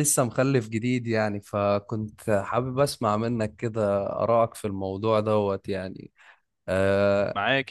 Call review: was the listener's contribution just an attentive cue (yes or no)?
no